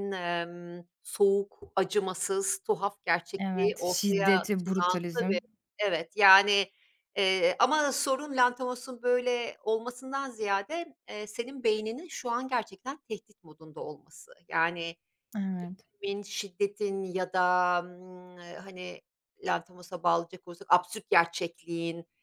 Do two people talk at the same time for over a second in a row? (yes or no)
yes